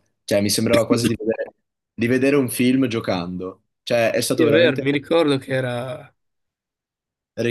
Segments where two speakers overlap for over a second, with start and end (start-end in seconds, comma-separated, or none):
none